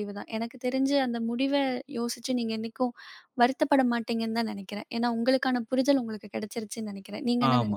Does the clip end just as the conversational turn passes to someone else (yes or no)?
yes